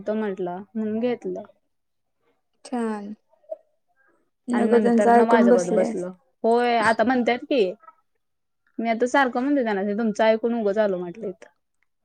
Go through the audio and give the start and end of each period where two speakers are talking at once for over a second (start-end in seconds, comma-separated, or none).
4.6-5.9